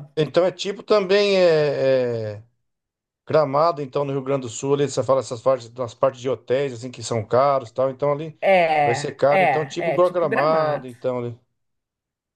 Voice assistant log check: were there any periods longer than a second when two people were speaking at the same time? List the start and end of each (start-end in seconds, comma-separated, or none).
8.8-10.9